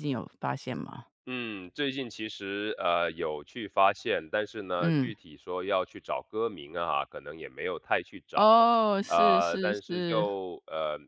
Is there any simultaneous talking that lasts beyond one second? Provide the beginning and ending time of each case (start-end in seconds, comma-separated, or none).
9.1-10.3